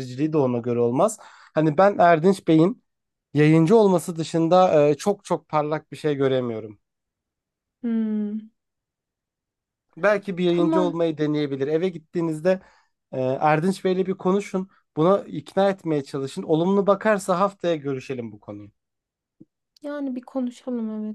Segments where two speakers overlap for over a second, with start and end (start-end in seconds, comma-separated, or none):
none